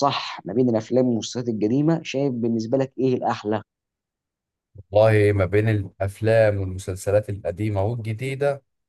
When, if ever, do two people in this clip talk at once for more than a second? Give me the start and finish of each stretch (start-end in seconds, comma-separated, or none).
none